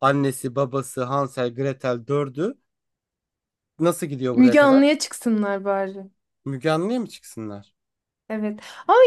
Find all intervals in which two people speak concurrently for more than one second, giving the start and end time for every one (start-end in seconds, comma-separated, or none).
none